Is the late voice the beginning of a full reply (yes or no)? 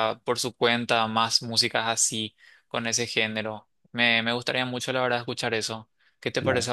yes